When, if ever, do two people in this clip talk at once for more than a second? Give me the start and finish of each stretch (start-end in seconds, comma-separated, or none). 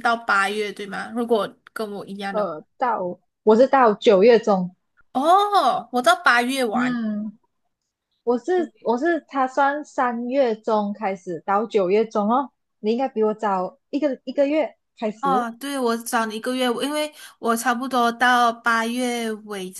none